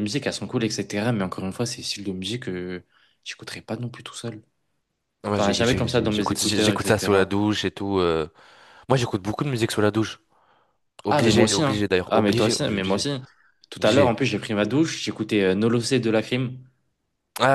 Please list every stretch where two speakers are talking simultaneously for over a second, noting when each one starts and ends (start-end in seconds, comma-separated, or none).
5.3-7.4, 11.1-13.1